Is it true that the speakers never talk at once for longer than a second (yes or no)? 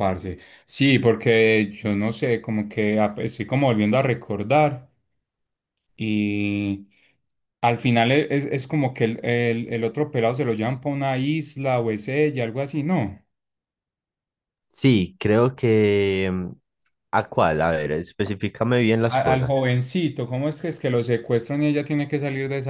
yes